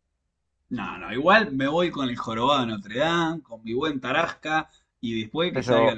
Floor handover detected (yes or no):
no